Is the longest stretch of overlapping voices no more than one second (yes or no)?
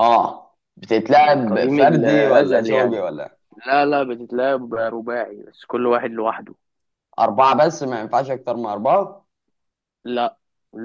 no